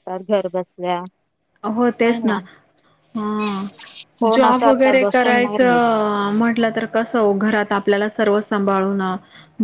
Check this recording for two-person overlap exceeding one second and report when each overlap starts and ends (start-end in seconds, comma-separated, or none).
4.4-5.9